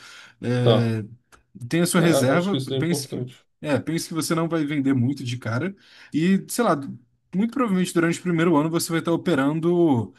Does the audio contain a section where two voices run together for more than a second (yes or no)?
yes